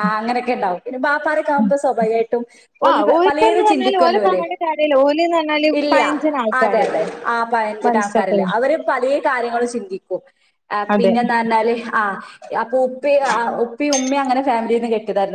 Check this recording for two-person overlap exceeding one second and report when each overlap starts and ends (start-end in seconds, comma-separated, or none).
2.9-4.4